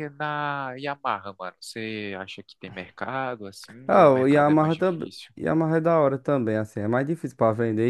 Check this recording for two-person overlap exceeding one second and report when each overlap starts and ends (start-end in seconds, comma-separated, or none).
3.9-5.3